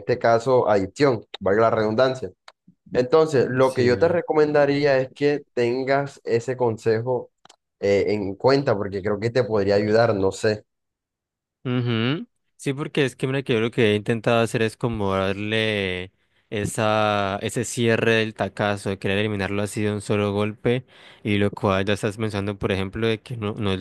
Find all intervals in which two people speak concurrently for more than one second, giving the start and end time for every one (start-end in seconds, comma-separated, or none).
3.6-4.9